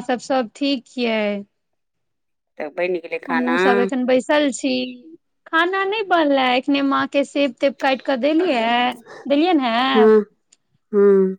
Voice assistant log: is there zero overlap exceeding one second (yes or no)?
yes